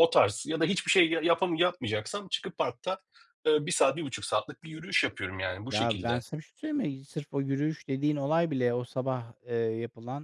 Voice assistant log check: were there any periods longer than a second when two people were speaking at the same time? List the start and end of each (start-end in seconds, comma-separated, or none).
none